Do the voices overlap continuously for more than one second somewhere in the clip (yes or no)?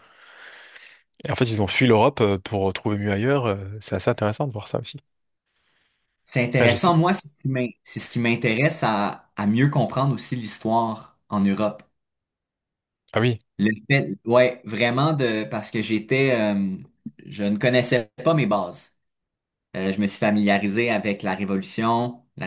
no